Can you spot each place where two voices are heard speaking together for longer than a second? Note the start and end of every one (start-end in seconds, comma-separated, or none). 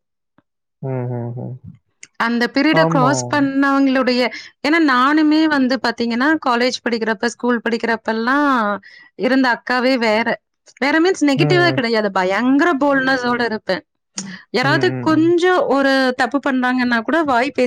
none